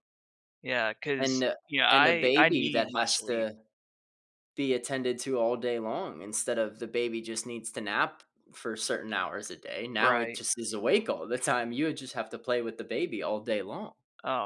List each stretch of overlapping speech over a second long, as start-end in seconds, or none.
1.2-3.5